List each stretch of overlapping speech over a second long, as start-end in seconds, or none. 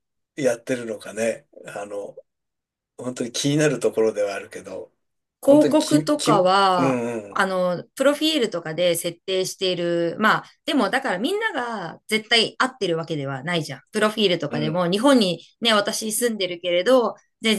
5.5-7.5